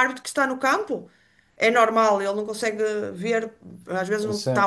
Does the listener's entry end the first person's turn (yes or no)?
no